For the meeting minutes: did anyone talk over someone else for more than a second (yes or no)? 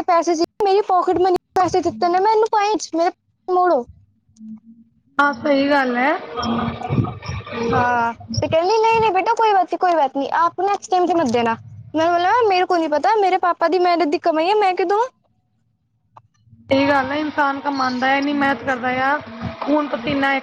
no